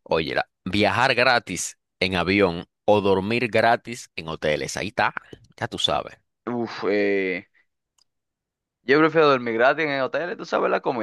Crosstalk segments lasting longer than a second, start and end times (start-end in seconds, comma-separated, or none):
none